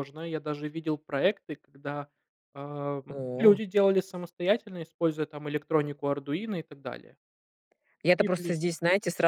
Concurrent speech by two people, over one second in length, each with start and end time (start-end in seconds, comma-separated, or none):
none